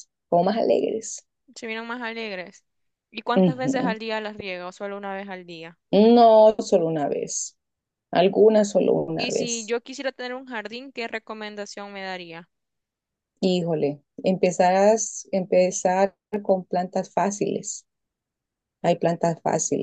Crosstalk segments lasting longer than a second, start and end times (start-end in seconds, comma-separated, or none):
none